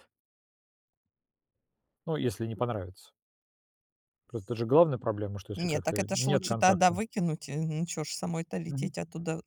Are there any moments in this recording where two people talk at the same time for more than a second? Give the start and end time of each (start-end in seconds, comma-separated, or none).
5.5-7.0